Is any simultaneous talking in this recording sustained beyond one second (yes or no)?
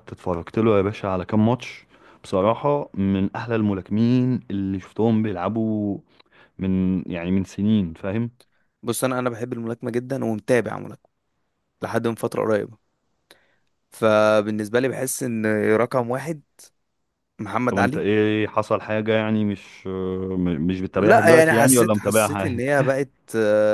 yes